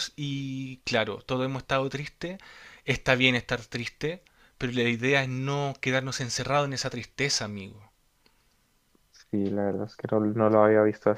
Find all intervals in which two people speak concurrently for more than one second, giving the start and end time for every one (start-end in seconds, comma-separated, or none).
none